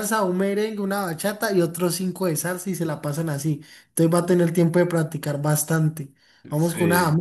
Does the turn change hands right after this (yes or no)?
no